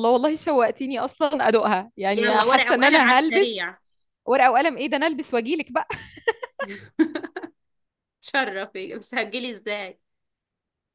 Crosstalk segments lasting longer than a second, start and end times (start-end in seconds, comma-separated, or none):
2.1-3.6